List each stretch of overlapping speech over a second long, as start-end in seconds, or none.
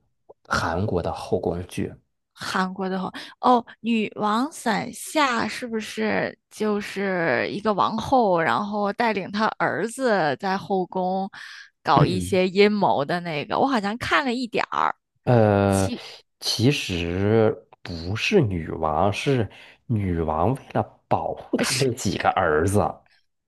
none